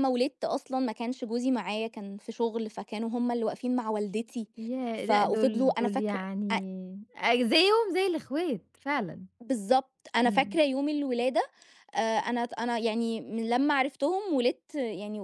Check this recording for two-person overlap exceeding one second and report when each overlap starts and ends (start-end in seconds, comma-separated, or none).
5.0-6.5